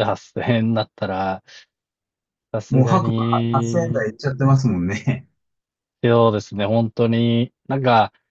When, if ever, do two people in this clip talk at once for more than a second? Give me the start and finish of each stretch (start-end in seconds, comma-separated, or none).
2.7-4.0